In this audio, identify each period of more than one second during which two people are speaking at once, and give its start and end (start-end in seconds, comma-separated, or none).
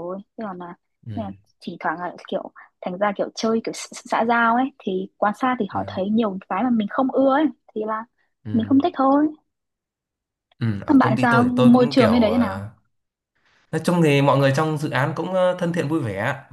10.9-12.6